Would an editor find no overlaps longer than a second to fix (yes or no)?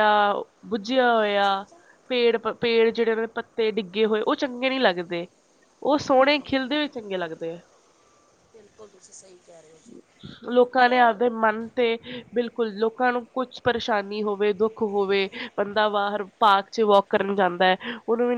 yes